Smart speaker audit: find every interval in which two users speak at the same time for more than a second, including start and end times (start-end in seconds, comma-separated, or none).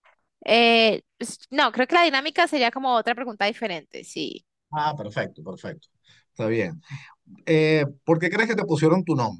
none